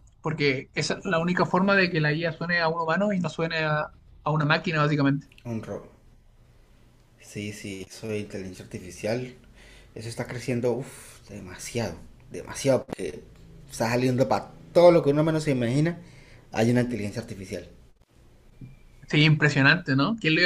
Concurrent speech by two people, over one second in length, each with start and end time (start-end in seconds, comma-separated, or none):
none